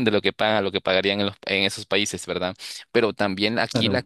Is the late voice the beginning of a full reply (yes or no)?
no